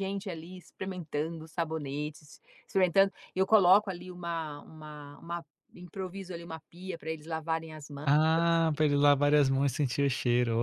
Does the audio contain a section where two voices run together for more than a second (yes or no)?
no